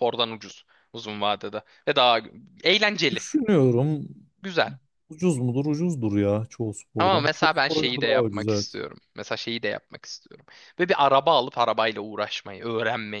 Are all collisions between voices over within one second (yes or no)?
no